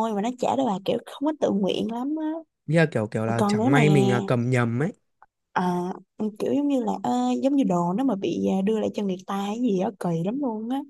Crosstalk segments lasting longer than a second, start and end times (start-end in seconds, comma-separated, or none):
none